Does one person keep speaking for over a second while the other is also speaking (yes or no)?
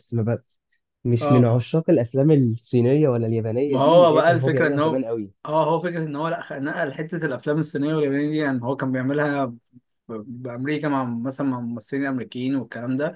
yes